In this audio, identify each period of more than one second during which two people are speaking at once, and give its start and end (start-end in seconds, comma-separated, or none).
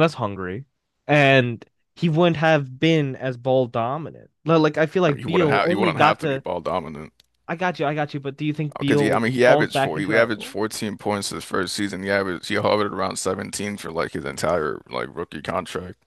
5.1-6.4, 8.8-10.6